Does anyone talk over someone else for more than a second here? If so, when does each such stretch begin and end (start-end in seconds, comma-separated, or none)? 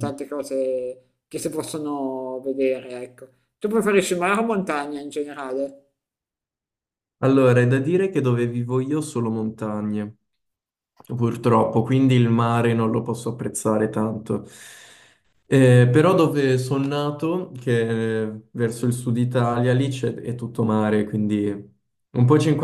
none